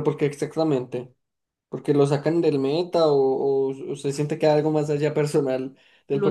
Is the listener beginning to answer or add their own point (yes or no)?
yes